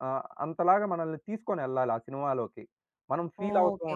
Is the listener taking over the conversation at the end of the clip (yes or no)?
yes